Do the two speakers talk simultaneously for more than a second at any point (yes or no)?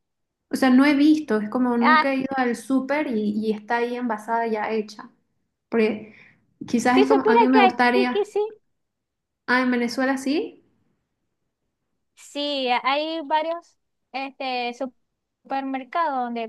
yes